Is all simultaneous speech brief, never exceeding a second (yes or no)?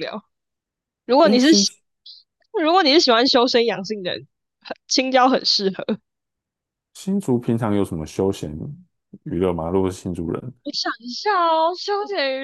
yes